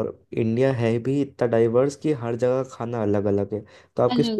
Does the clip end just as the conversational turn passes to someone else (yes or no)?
no